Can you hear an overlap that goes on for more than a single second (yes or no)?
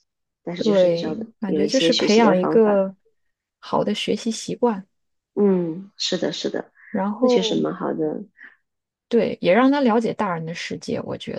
yes